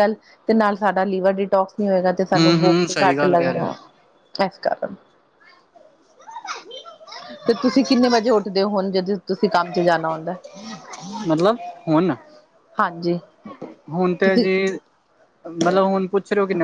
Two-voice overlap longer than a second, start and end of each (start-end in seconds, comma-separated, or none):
2.4-3.8